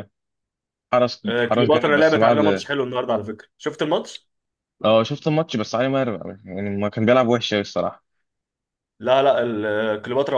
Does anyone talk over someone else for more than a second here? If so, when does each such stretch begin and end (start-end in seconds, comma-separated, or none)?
1.3-2.7